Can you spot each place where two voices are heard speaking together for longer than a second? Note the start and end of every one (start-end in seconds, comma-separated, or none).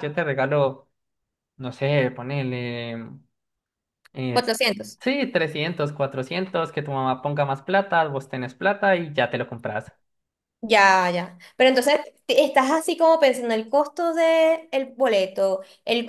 none